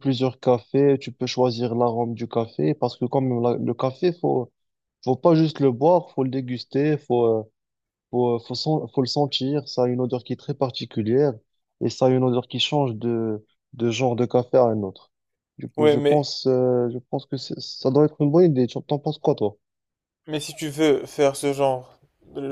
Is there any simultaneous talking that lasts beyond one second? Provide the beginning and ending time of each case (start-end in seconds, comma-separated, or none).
none